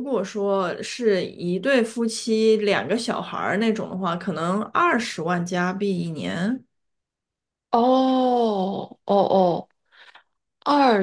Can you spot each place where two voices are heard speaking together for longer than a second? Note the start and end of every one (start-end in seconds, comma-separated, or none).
none